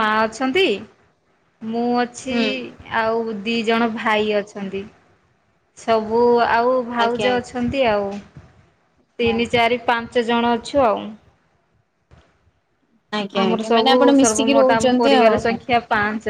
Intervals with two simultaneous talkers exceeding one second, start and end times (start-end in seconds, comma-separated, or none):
13.4-15.4